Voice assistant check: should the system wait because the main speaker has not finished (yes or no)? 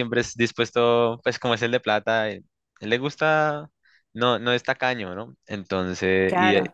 yes